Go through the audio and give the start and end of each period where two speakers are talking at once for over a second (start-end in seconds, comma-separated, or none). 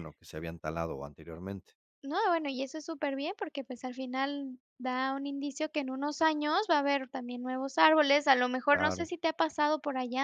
none